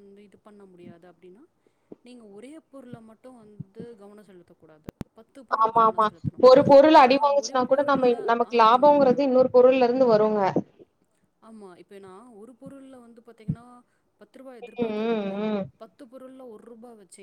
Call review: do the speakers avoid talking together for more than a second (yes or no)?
no